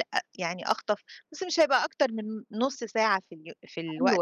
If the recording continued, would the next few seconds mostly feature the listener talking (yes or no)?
yes